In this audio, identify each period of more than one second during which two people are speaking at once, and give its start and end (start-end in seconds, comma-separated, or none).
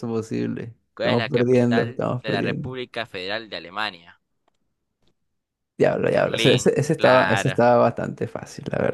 0.9-2.7, 6.1-7.6